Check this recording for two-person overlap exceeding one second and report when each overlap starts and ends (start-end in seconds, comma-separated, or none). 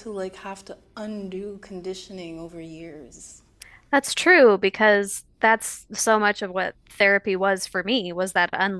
none